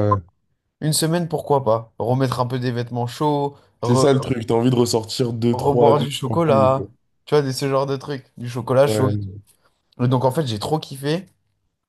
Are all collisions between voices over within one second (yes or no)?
no